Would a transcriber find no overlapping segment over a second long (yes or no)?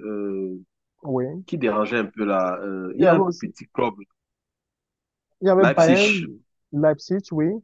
yes